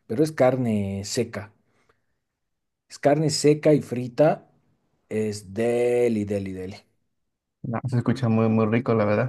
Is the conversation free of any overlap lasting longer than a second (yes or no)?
yes